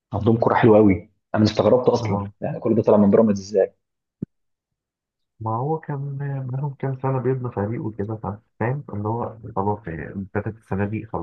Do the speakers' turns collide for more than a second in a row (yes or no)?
no